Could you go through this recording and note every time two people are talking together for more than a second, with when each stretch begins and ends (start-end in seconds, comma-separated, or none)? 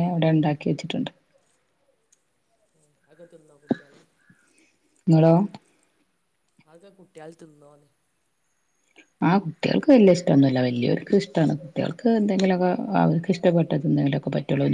none